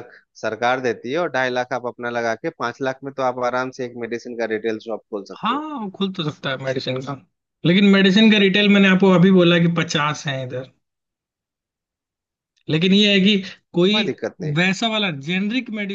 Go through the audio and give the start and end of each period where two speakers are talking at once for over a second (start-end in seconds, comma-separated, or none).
none